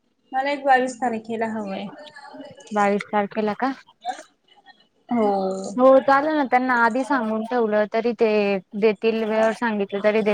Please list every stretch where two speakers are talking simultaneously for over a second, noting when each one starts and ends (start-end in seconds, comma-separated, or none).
none